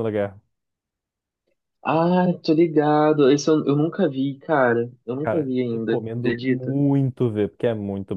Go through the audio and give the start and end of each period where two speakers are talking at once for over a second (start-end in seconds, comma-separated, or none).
5.2-6.7